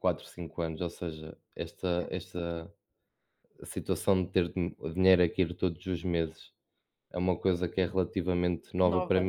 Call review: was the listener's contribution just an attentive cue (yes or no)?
yes